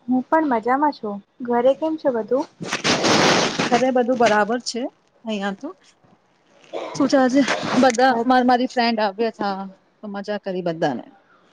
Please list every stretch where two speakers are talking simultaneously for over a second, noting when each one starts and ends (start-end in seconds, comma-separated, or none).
none